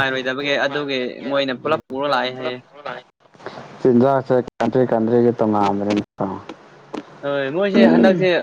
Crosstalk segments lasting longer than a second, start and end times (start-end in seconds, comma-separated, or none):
none